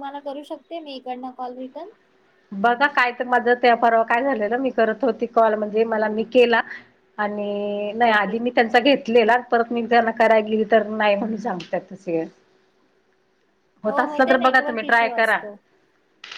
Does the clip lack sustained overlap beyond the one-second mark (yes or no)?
no